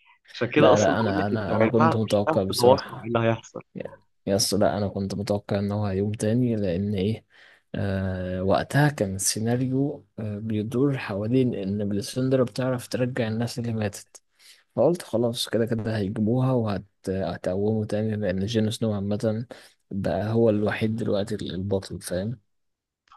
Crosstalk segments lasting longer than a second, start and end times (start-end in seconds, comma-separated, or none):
0.6-3.1